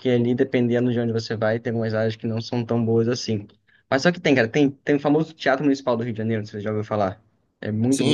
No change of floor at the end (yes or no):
no